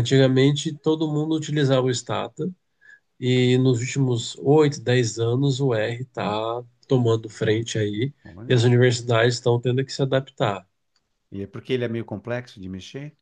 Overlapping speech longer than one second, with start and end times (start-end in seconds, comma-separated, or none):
none